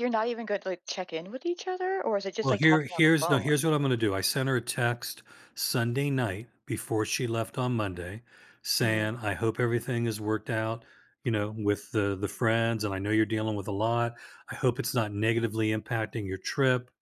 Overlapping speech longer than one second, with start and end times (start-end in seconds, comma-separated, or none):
2.4-3.6